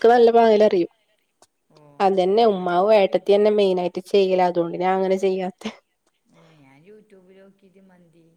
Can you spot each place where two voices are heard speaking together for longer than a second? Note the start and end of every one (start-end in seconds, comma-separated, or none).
2.5-3.9